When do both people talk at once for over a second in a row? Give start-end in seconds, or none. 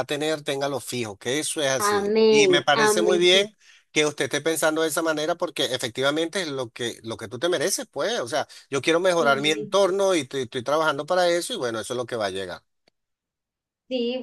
1.8-3.2